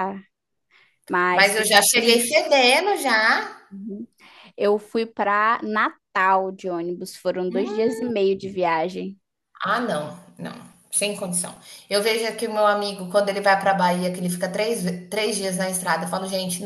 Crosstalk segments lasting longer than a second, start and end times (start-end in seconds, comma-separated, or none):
1.3-2.8